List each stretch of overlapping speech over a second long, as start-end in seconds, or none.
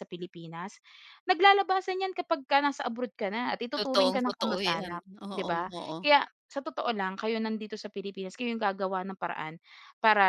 3.8-6.0